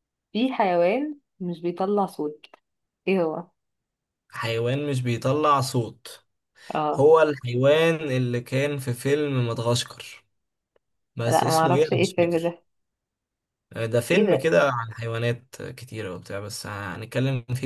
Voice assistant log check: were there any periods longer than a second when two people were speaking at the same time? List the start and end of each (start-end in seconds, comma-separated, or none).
11.3-12.6